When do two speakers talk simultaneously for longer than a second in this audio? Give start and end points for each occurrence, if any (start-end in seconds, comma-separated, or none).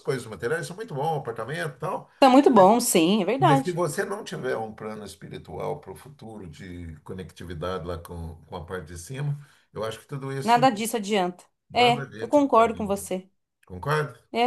11.7-13.1